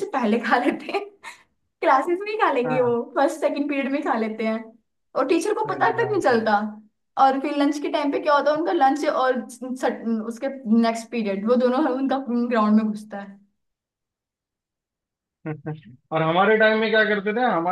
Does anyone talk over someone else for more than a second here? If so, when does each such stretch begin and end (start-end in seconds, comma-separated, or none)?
none